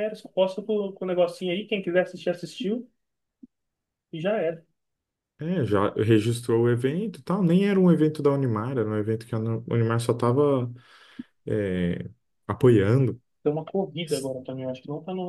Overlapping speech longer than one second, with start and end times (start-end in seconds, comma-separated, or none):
none